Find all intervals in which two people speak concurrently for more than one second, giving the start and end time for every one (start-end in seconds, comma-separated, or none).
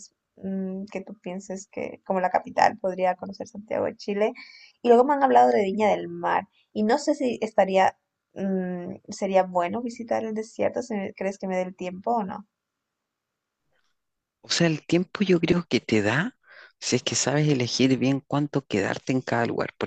none